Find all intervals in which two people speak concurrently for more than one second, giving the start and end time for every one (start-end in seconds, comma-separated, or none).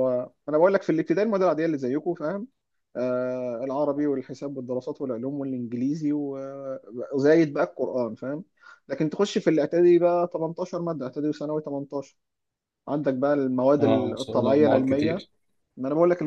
13.8-15.3